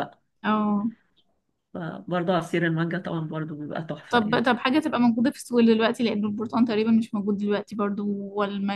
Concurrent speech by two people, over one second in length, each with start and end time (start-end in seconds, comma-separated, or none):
none